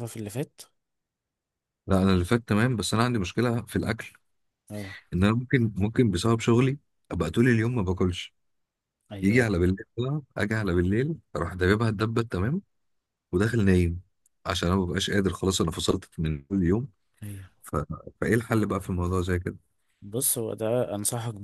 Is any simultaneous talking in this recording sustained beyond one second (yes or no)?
no